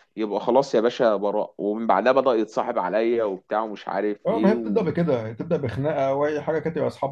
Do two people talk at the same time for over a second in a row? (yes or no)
no